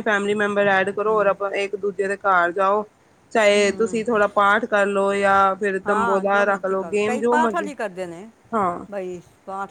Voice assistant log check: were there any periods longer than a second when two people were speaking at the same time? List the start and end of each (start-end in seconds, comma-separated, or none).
5.9-7.7